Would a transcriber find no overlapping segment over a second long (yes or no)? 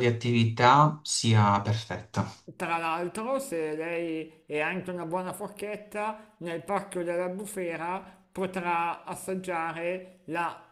yes